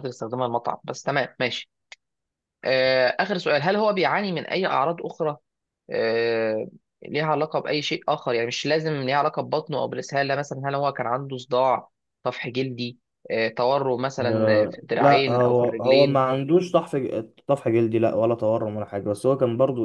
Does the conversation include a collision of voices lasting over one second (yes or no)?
yes